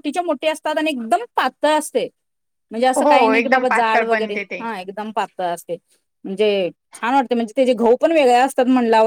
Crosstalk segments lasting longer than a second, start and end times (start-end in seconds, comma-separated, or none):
3.0-4.6